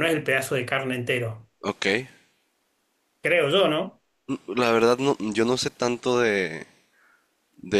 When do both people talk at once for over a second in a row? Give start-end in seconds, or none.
none